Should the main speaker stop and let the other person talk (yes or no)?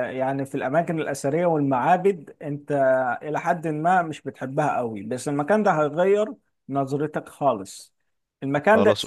no